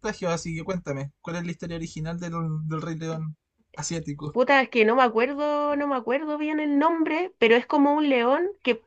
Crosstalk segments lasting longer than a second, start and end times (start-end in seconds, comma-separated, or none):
none